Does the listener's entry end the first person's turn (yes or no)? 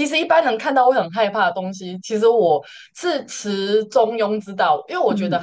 no